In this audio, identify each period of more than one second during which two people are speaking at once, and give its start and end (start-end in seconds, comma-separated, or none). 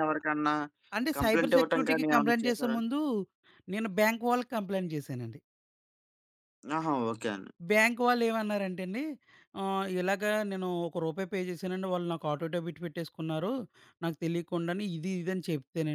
1.2-2.8